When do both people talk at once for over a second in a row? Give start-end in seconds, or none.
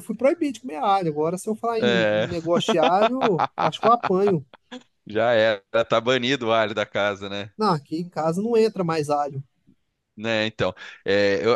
none